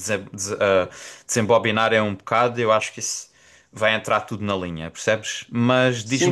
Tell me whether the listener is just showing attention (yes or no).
no